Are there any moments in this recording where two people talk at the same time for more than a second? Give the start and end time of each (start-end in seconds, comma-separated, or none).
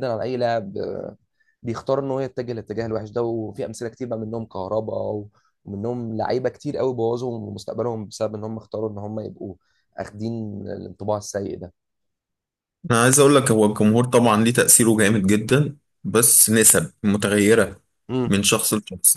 none